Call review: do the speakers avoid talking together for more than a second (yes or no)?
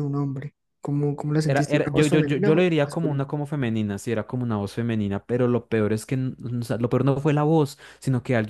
no